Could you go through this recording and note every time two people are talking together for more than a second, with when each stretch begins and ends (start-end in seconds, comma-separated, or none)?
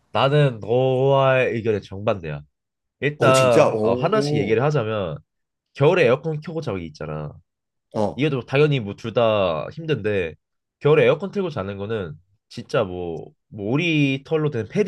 3.2-4.6